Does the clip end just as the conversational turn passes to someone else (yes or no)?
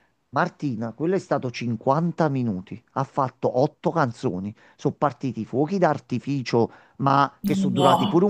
no